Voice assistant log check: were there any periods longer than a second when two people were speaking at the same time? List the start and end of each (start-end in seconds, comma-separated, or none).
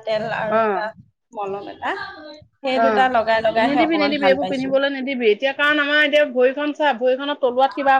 2.8-4.7